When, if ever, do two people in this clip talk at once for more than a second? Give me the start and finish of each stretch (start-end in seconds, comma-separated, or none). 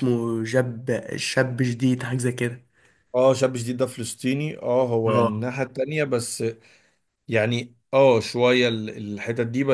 none